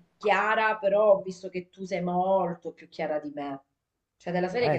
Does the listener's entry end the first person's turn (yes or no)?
no